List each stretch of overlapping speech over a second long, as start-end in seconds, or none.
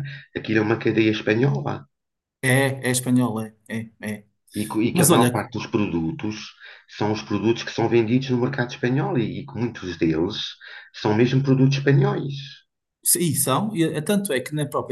none